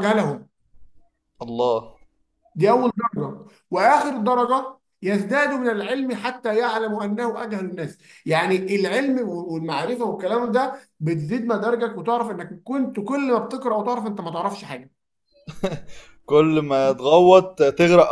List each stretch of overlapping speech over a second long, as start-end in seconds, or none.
none